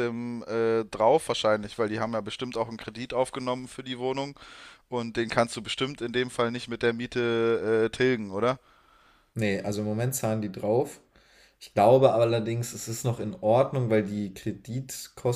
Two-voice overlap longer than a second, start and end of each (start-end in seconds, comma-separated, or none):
none